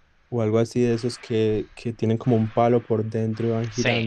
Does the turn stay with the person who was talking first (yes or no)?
no